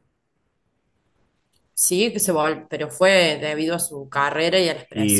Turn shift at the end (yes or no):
yes